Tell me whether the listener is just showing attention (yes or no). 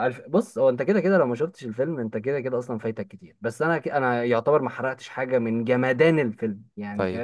no